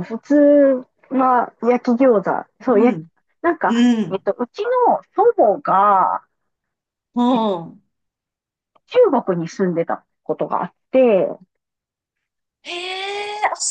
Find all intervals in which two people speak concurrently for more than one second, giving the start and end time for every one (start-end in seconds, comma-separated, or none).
none